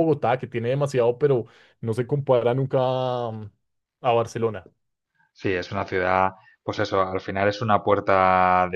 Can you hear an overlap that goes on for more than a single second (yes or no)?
no